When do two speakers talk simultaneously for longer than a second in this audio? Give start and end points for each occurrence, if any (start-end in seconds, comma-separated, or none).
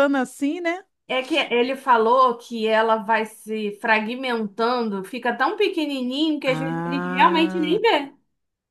6.5-7.8